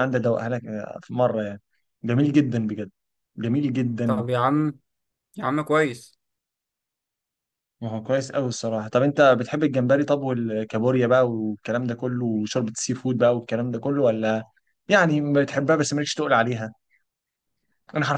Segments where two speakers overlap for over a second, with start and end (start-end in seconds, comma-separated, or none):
none